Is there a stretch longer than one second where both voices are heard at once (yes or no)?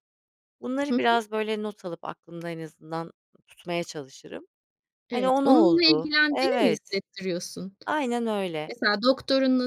yes